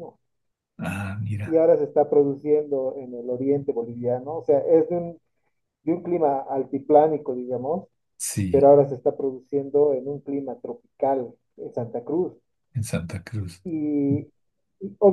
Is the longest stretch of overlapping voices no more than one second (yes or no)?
yes